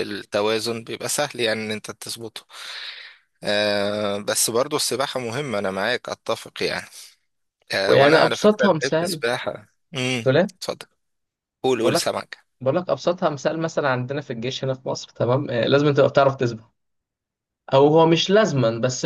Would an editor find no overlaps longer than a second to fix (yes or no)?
no